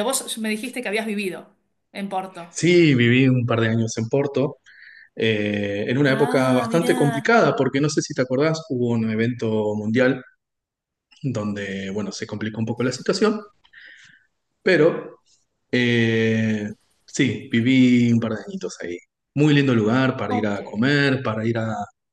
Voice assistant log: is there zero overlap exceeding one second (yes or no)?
no